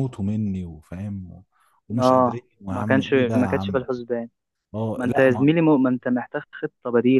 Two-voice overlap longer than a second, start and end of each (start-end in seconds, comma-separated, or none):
2.0-3.9